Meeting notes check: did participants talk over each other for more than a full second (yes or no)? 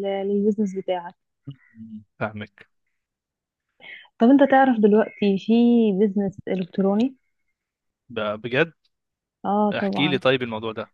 no